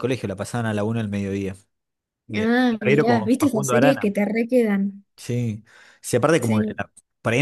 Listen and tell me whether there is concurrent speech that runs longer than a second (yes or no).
yes